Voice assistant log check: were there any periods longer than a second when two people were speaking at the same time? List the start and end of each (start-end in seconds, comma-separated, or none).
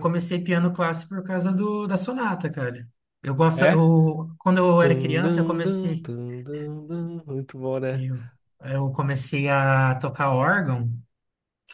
4.8-6.1